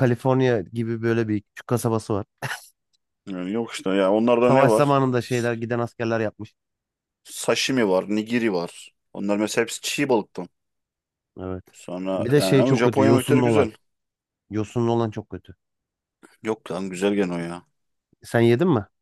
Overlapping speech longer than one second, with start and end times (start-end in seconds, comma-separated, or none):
12.2-13.7